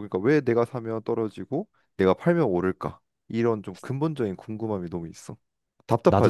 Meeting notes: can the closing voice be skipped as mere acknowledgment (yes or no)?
no